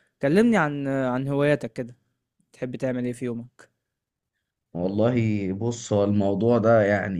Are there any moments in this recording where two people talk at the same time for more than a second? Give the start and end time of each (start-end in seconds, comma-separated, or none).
none